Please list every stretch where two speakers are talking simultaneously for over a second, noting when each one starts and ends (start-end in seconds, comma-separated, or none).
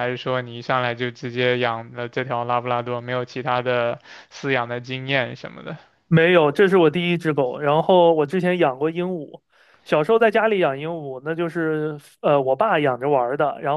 none